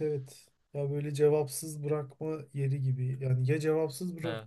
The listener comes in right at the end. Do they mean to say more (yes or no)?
no